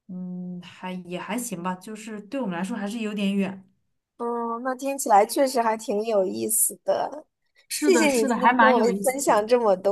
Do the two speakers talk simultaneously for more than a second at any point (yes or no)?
yes